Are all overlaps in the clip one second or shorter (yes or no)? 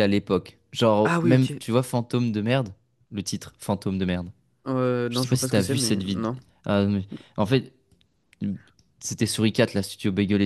no